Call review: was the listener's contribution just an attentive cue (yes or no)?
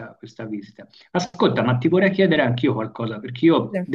yes